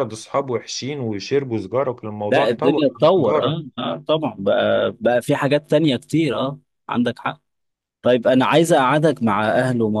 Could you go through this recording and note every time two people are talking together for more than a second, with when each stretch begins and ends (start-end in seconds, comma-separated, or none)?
2.3-3.7